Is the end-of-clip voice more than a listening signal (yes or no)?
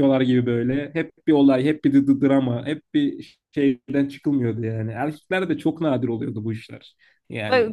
no